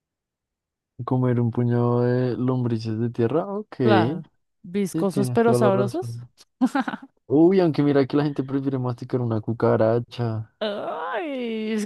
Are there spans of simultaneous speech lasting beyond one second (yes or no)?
yes